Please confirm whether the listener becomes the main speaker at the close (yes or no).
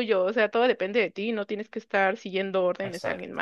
yes